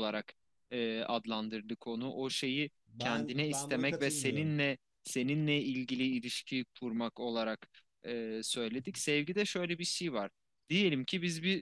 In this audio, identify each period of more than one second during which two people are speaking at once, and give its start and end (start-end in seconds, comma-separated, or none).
2.9-4.6